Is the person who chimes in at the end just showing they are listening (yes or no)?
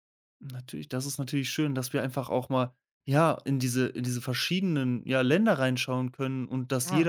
yes